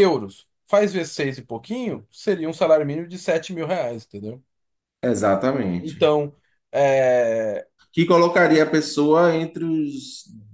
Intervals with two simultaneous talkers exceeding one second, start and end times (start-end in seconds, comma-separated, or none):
none